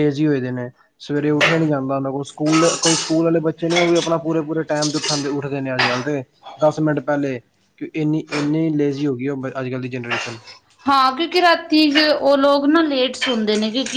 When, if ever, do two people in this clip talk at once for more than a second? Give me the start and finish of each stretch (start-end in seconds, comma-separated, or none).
none